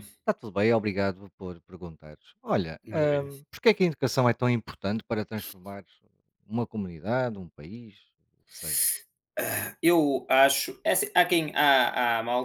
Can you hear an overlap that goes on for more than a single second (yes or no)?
no